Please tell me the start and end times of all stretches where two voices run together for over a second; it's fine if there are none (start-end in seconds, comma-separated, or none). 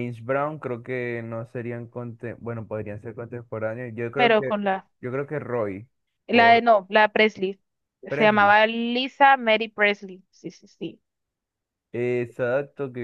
none